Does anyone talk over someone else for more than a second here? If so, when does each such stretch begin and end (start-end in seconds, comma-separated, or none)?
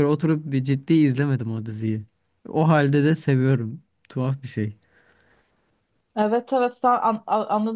none